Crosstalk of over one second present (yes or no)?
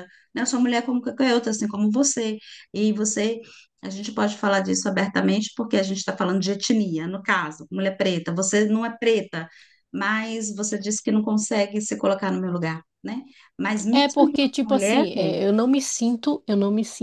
yes